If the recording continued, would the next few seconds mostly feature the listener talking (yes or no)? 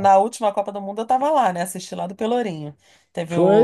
no